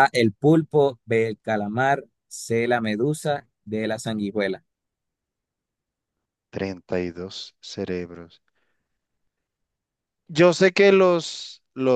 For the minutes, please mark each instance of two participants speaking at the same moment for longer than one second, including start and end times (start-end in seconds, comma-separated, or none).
none